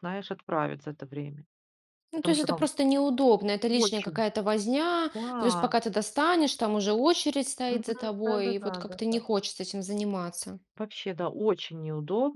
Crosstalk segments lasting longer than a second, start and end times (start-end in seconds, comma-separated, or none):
7.7-9.2